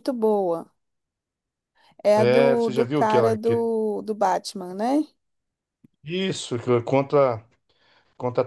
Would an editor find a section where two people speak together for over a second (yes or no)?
yes